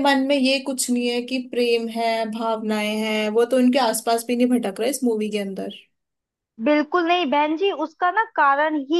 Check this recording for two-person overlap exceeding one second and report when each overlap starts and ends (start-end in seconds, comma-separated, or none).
none